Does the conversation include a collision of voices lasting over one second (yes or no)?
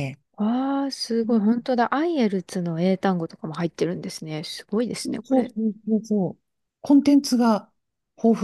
no